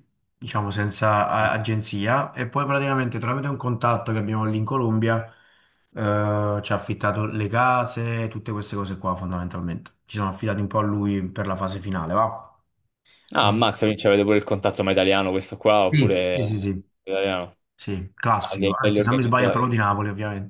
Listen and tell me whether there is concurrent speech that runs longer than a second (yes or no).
yes